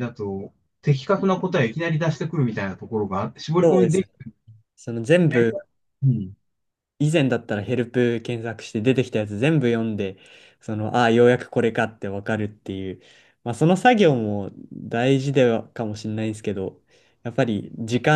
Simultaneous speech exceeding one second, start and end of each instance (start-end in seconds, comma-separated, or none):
none